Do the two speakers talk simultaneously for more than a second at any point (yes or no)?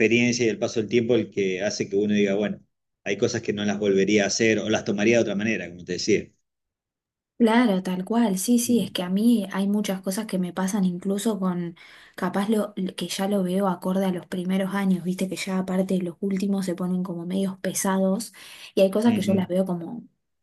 no